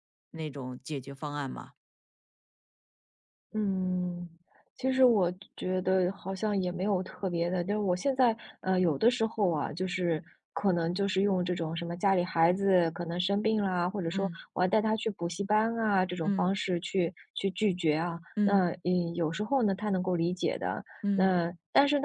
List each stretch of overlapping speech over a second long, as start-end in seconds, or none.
none